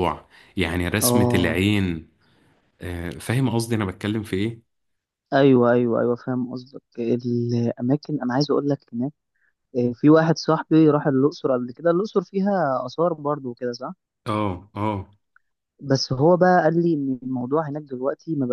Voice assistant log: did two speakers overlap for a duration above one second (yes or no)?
no